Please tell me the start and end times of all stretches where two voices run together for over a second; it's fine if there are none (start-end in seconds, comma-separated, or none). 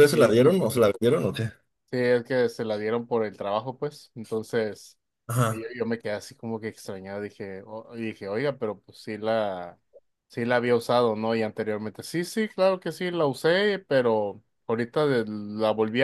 none